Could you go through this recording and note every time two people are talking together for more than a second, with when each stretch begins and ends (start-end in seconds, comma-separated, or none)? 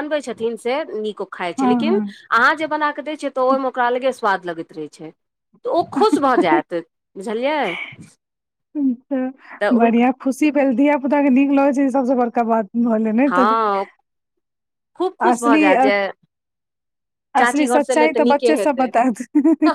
17.4-18.9